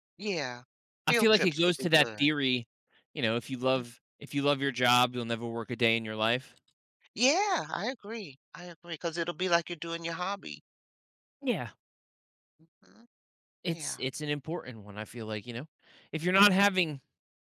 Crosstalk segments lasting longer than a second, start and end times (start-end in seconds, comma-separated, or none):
1.1-2.3